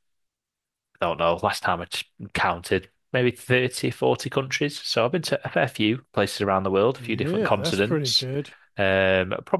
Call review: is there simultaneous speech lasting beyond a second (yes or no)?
yes